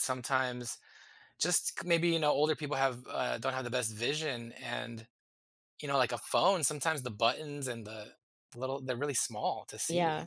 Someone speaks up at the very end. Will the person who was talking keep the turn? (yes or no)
no